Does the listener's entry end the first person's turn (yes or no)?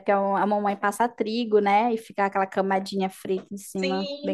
yes